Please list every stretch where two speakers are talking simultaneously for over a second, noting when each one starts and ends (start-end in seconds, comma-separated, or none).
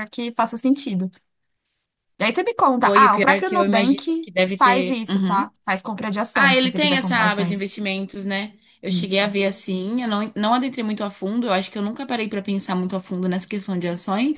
2.8-5.5, 6.3-7.7